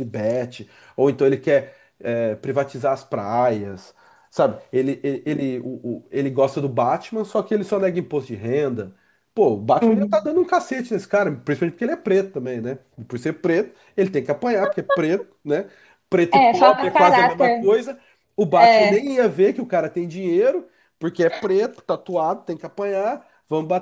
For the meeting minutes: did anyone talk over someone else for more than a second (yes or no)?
yes